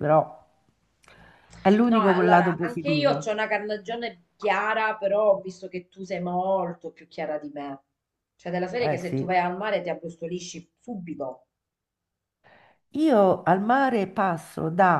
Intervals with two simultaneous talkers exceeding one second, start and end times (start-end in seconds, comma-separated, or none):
1.9-3.3